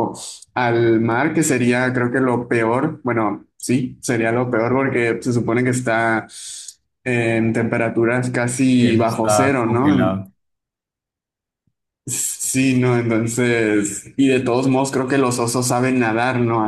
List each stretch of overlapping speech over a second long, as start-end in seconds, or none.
8.8-10.2